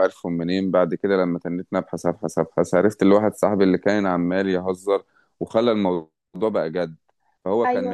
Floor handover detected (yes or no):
no